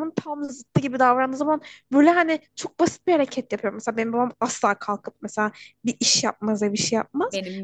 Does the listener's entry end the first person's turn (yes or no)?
no